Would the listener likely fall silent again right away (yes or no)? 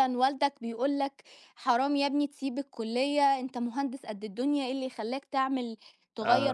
yes